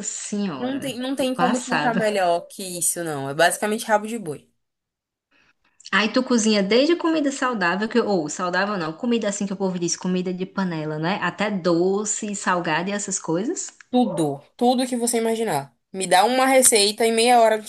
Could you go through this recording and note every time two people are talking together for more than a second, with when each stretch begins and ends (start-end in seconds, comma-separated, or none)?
0.6-2.1